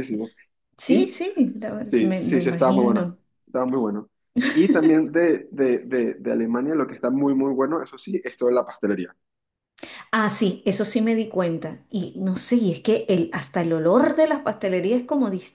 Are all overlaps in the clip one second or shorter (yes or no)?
no